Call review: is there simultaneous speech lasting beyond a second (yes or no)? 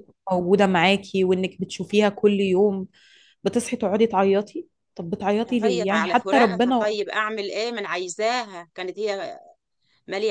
yes